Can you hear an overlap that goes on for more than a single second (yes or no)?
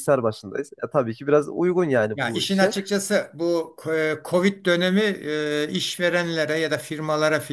no